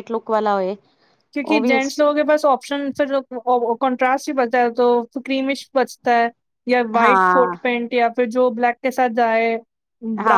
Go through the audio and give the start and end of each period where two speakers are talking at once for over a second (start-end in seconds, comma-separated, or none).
none